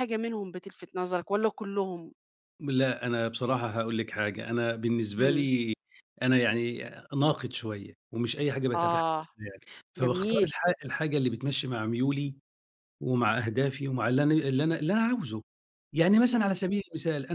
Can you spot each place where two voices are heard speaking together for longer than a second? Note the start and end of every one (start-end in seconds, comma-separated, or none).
none